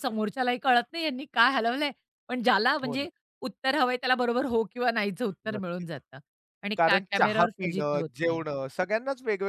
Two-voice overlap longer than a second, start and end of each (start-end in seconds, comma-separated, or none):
6.8-8.4